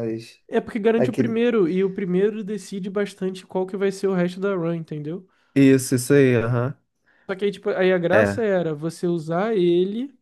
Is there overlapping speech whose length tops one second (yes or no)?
no